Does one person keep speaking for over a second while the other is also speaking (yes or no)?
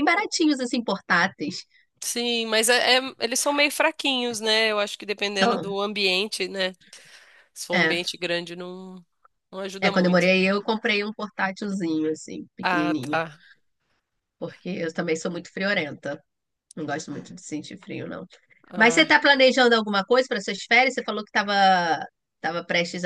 no